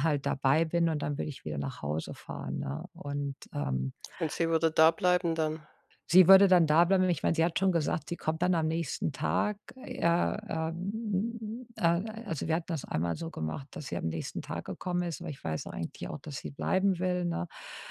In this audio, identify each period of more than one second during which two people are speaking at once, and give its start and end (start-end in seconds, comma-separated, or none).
none